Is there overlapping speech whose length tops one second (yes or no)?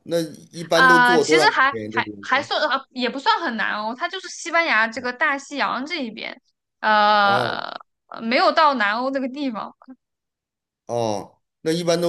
yes